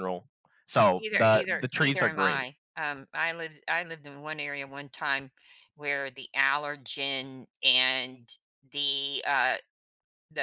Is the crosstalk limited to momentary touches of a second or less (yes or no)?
no